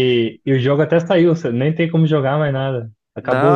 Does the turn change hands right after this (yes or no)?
yes